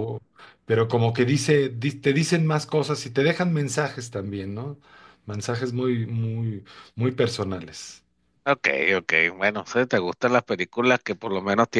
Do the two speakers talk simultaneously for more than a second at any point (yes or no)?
no